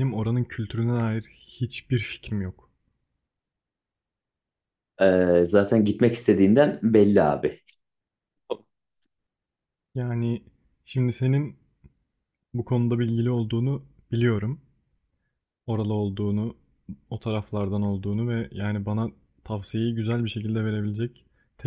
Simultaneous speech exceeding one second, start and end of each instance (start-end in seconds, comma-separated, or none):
none